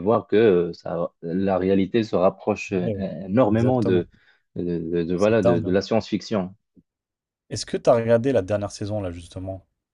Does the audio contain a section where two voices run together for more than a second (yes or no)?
no